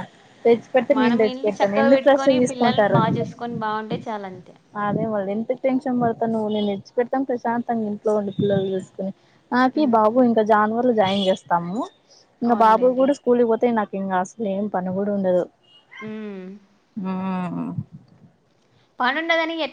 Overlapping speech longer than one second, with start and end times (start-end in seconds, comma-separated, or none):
1.0-3.0